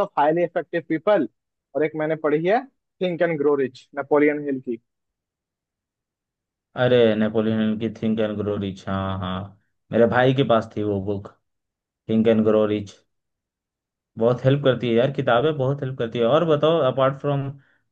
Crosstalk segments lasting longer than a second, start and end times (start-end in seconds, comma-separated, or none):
none